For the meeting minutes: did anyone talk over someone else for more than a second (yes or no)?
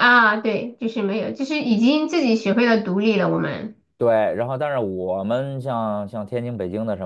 no